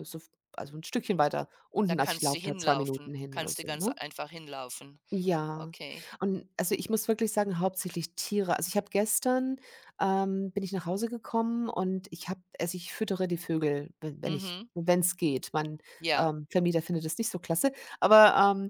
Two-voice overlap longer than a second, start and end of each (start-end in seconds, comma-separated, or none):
1.8-3.9